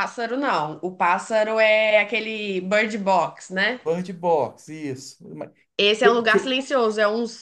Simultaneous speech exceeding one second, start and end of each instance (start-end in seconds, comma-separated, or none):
none